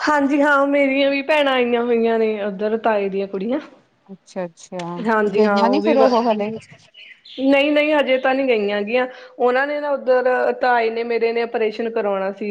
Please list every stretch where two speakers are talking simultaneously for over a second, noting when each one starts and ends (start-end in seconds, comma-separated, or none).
none